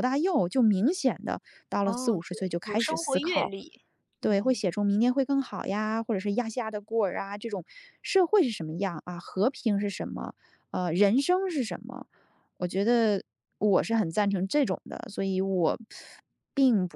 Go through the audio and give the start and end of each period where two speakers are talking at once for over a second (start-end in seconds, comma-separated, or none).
1.8-3.5